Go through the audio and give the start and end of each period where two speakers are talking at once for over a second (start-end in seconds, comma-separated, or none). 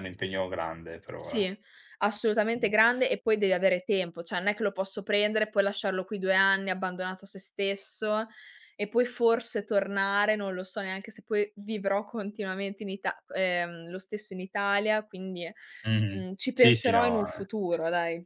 16.1-17.5